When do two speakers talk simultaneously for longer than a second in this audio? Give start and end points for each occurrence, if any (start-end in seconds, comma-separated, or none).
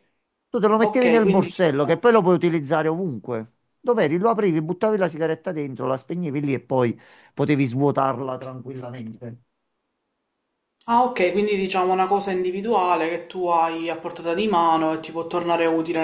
0.8-2.0